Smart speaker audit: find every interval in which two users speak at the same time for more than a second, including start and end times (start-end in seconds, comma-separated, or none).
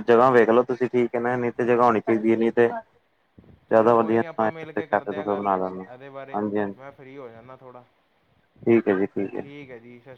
3.7-5.5